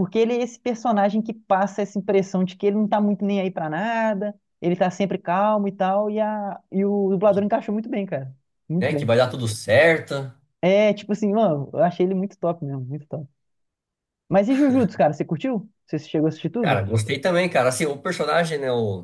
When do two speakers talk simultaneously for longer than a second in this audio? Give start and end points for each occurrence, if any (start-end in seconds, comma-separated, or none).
none